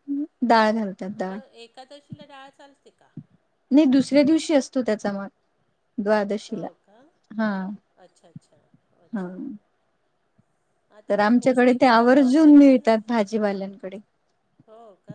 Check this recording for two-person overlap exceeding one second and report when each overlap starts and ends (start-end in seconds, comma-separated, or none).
11.1-12.9